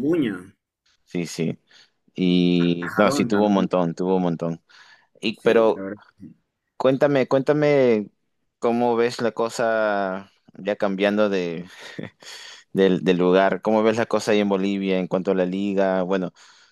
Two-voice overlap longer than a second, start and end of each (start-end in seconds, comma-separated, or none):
2.6-3.8